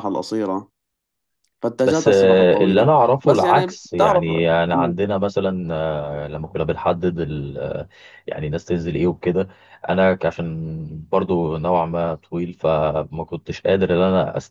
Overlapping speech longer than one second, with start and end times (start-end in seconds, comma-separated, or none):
1.8-4.3